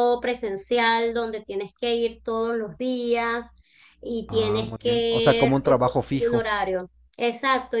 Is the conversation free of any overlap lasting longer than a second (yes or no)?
no